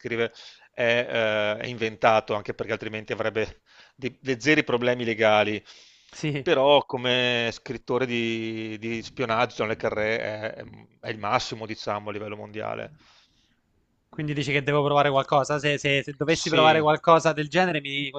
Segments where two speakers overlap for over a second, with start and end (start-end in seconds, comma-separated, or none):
none